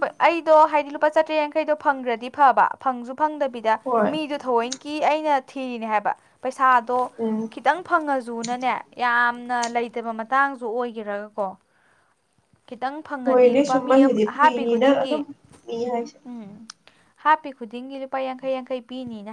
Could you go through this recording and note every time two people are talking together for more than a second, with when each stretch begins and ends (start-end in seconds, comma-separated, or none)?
13.2-15.2